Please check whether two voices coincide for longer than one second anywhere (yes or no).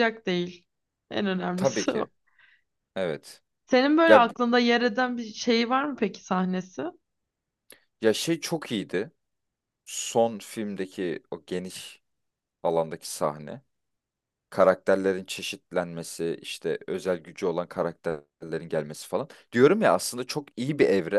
no